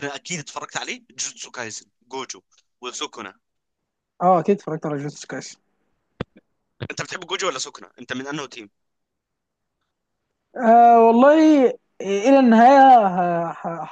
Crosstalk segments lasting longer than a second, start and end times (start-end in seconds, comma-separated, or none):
none